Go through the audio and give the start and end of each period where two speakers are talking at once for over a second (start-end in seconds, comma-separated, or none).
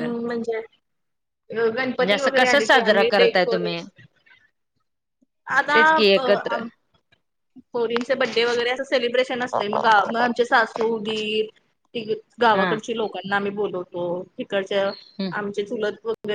1.9-3.7